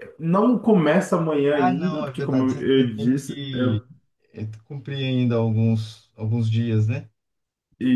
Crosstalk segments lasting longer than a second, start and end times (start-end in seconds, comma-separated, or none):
1.5-3.4